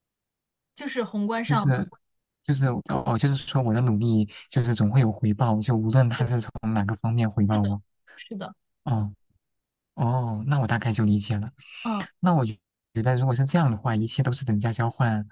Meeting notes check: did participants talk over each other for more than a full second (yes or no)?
no